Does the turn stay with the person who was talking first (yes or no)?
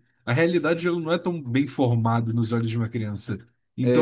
yes